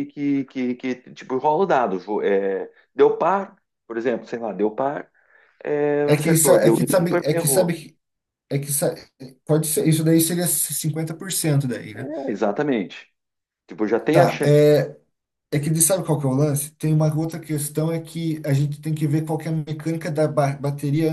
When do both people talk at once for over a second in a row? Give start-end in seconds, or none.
6.0-7.8